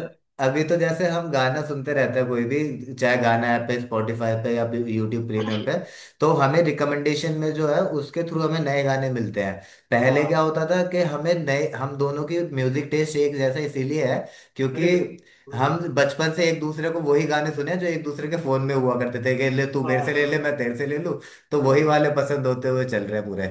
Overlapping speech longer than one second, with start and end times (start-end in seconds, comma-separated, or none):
none